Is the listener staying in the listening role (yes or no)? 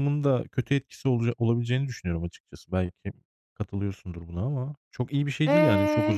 no